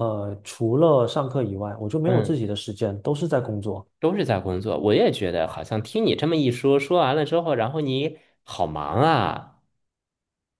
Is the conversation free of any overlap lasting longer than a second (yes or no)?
yes